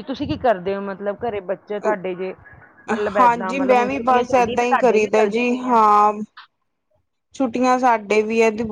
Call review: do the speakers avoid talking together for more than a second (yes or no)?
no